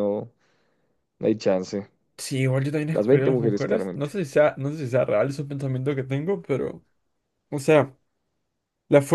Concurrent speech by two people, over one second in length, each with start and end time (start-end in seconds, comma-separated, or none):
2.9-4.1